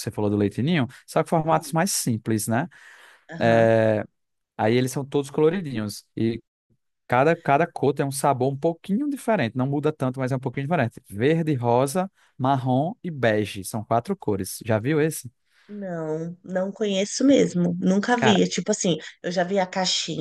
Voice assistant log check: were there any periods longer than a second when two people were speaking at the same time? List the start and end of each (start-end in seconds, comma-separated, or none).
none